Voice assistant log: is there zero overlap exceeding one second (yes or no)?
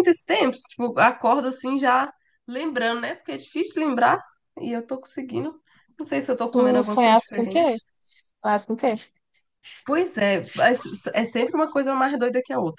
no